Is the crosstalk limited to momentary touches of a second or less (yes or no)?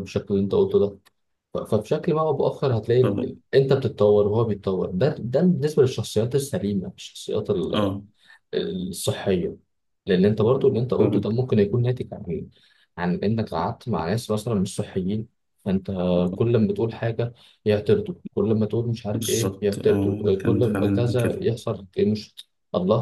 no